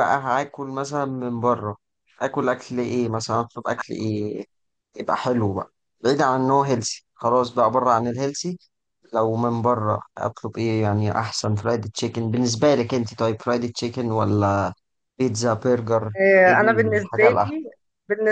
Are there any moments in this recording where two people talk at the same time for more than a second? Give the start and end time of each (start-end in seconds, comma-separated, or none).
16.2-17.5